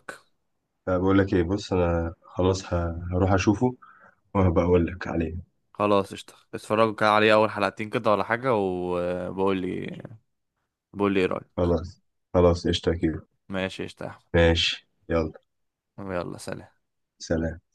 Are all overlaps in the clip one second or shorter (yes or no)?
yes